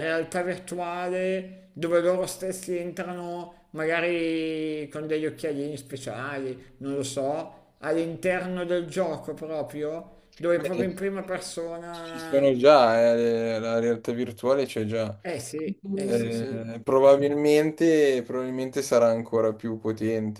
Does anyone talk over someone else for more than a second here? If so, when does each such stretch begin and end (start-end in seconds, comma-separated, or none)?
none